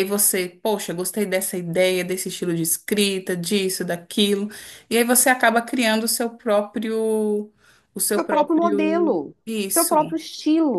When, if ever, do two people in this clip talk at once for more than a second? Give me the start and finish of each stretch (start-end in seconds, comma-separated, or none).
8.1-10.0